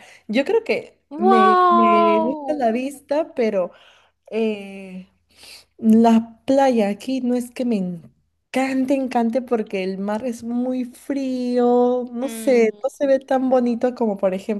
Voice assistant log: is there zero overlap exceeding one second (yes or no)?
no